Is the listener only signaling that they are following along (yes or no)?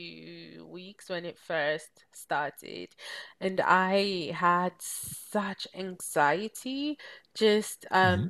yes